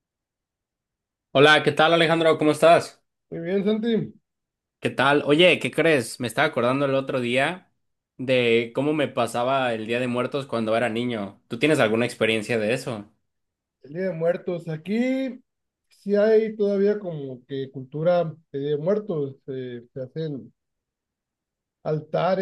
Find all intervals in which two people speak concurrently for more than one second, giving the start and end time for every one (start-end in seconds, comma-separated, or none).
none